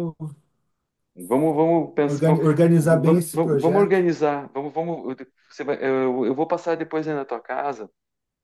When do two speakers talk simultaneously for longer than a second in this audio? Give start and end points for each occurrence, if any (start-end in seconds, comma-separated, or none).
2.1-4.0